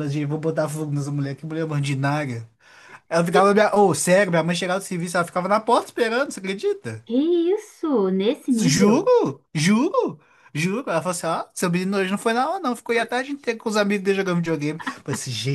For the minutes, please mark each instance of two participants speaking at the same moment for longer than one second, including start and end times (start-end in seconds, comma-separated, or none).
none